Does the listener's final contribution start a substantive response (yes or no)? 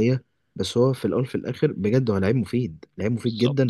no